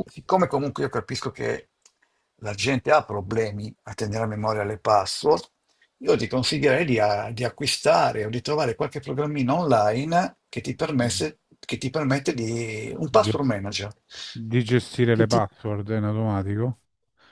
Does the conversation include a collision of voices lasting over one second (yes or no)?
no